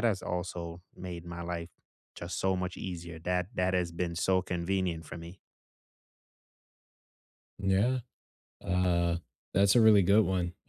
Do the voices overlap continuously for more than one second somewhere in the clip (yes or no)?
no